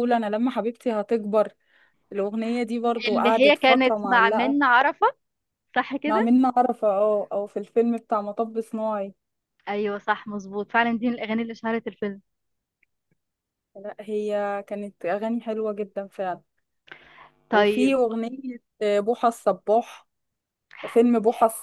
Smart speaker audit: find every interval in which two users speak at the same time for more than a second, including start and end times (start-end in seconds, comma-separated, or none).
3.1-4.6